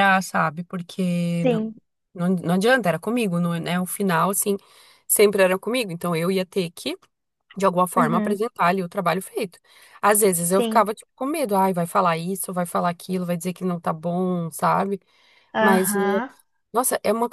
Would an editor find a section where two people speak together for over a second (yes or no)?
no